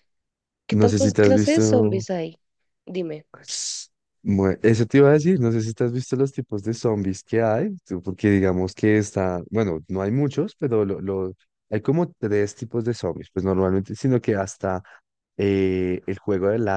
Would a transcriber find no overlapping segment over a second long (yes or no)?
no